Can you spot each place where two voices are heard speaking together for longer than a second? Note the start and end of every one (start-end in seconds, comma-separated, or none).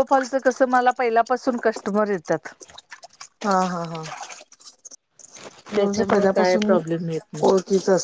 5.8-7.5